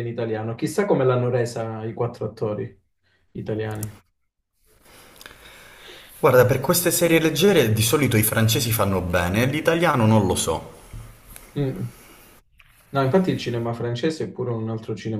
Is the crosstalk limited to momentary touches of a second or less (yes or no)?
yes